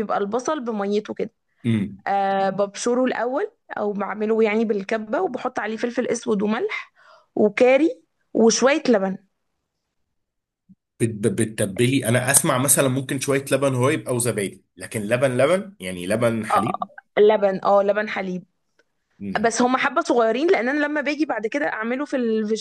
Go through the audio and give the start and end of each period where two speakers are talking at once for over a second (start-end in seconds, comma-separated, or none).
none